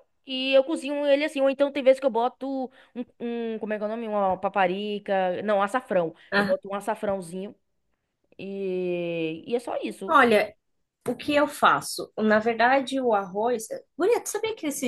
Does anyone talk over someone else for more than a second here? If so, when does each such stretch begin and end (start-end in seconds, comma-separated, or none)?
none